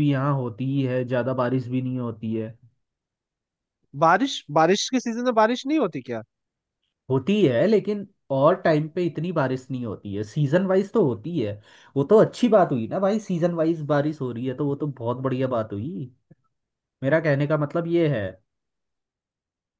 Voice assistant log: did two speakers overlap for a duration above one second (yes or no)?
no